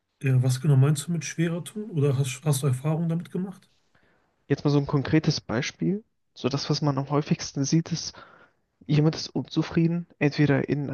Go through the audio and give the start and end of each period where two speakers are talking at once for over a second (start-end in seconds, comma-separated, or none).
none